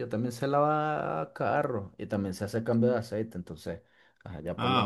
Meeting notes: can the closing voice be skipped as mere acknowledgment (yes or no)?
no